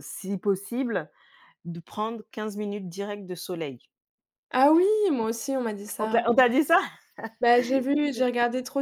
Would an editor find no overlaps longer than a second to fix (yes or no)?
yes